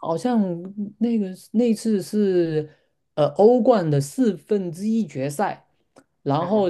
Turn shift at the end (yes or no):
no